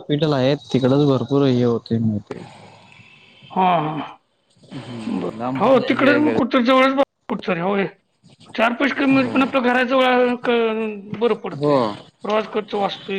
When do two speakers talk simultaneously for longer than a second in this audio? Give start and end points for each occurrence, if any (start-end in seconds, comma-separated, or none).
4.8-6.6